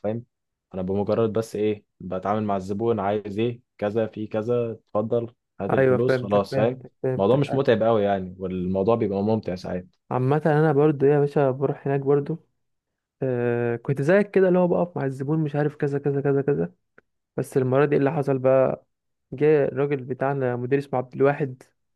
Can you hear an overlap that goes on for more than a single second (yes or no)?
yes